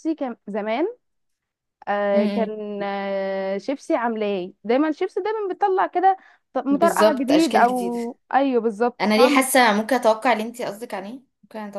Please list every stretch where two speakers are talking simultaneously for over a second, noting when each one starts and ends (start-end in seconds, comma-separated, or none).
6.7-8.0